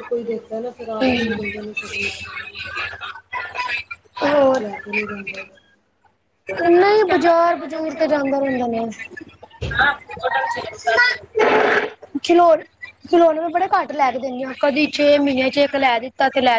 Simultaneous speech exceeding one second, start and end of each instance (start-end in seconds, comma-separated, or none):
none